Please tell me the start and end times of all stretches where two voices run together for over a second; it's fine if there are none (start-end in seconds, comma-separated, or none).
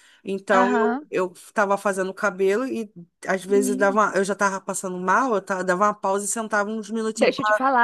none